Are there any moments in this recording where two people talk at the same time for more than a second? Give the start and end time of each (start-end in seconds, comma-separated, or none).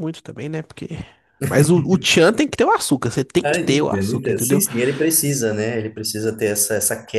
3.4-4.6